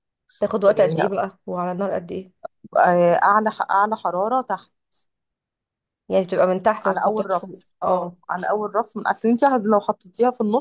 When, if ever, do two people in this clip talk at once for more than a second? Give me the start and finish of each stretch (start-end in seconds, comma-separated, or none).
6.8-8.2